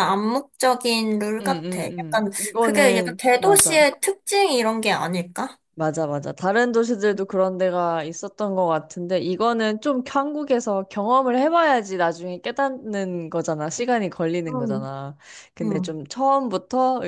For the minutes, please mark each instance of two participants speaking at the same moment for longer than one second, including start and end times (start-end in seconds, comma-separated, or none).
1.4-3.9